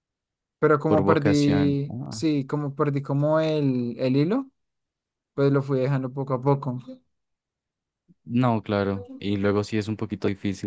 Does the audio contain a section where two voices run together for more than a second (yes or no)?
yes